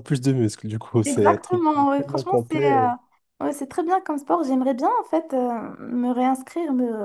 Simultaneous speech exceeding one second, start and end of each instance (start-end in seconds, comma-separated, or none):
1.0-2.8